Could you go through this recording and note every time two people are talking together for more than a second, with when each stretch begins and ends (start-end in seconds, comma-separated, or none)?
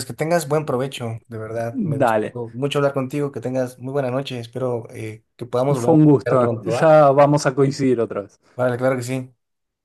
5.7-6.9